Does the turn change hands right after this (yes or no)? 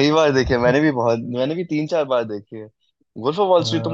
no